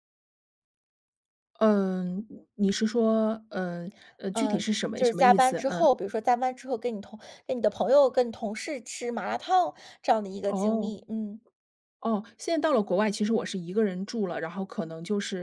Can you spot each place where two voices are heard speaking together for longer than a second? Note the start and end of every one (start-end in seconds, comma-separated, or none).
4.3-5.9